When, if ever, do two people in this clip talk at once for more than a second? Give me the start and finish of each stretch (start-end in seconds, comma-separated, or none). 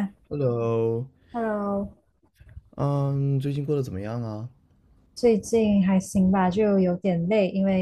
none